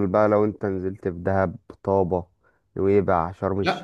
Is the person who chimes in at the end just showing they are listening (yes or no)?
no